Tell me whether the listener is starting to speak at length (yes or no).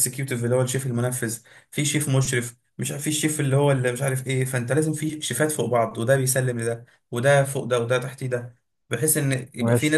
no